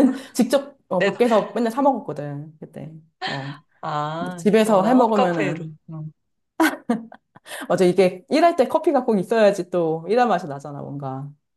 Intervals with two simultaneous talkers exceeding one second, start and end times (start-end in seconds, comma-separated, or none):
4.2-5.7